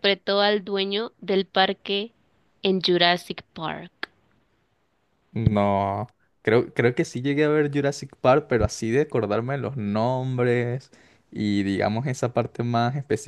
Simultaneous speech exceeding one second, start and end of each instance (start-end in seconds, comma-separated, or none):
none